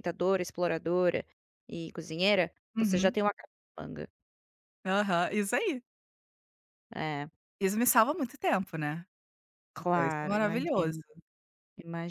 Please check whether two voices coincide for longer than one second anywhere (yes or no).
yes